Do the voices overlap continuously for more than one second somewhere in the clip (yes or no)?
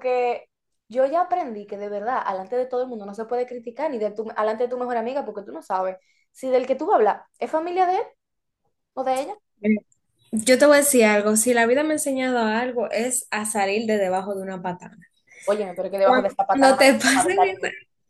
yes